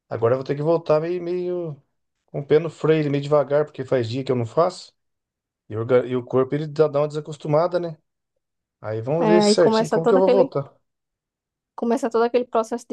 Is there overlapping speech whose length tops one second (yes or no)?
yes